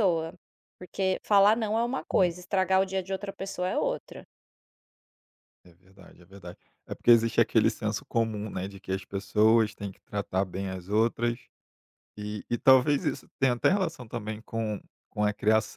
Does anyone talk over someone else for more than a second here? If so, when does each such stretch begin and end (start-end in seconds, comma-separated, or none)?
none